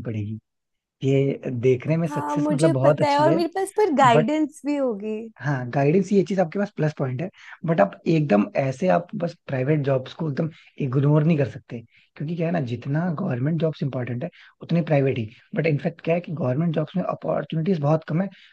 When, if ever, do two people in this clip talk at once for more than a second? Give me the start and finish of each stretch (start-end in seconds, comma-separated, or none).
2.1-3.4